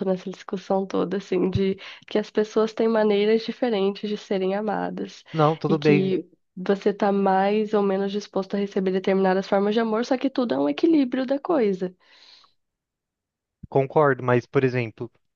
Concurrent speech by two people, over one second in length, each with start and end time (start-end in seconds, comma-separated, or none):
none